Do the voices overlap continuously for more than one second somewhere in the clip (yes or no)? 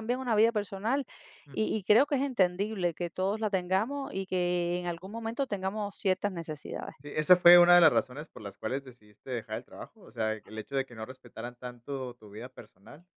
no